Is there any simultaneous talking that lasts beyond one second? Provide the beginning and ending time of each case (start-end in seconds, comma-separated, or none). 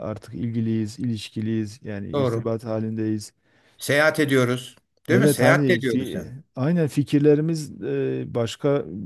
5.1-6.3